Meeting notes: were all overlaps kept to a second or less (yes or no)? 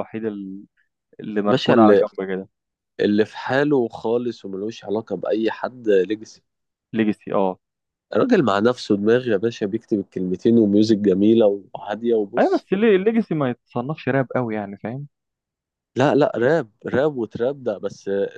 yes